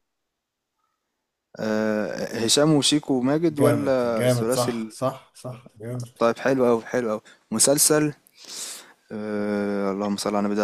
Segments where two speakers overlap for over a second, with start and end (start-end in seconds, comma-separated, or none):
3.5-5.0